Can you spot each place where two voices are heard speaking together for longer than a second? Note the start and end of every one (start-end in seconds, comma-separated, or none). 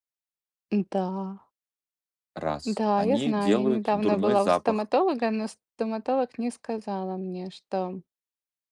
2.6-4.9